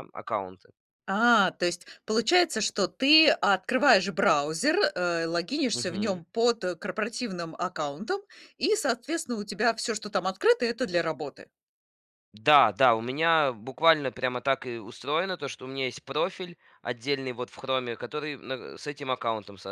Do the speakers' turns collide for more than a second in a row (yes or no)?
no